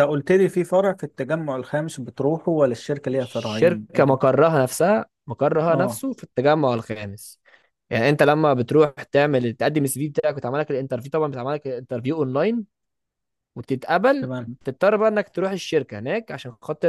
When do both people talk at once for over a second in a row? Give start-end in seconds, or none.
3.1-4.3